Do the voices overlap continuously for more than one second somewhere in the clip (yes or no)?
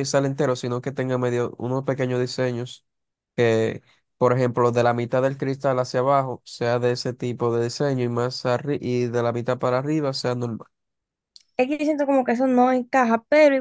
no